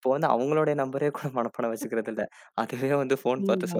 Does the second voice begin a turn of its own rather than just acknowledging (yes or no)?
yes